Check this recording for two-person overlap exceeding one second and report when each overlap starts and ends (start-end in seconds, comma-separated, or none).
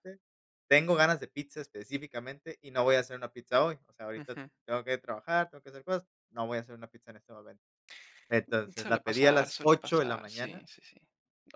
8.8-10.7